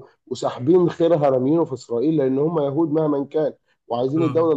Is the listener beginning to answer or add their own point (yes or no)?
no